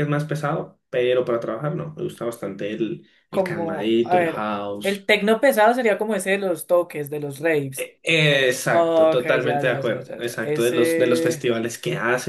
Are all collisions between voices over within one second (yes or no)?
no